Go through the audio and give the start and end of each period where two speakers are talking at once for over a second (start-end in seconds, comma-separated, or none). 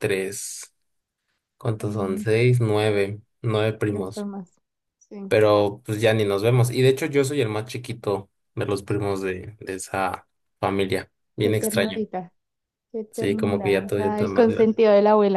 13.1-14.8